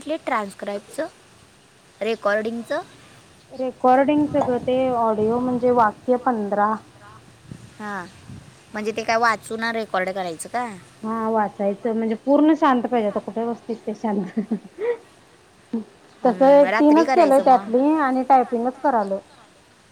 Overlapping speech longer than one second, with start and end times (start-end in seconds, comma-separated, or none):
16.2-17.7